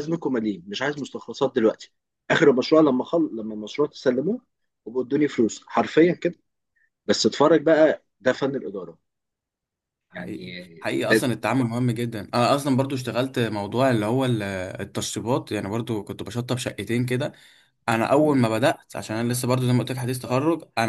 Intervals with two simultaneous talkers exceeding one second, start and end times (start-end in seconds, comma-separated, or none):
none